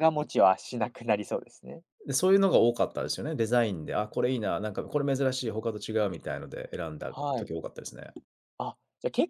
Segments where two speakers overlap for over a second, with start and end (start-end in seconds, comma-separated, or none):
none